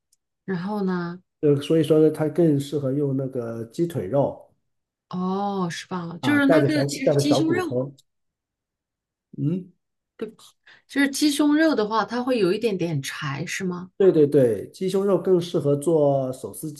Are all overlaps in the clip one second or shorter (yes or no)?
no